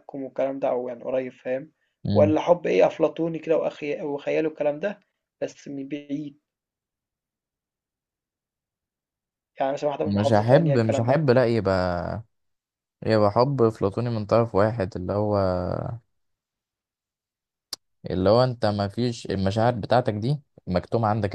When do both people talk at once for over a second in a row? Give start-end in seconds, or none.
10.0-11.3